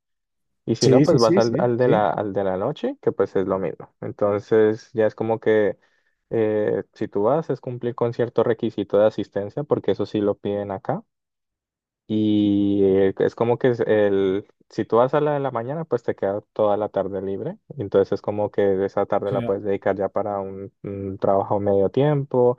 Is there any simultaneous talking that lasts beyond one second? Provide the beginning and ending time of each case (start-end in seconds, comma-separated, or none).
0.8-2.1